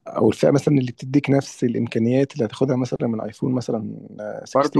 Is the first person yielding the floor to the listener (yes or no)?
yes